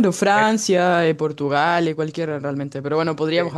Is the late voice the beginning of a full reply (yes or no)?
no